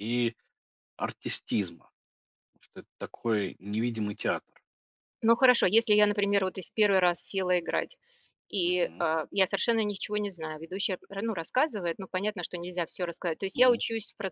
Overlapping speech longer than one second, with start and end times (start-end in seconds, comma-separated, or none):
none